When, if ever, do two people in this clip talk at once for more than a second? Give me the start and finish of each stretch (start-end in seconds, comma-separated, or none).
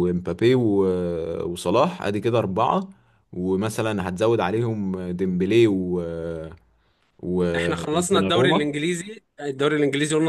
7.5-8.8